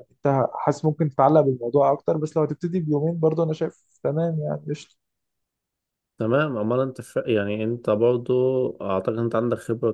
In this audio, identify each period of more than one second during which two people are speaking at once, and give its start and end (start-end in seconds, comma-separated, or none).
none